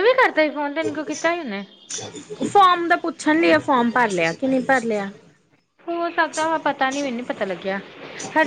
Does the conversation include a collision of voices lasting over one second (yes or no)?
no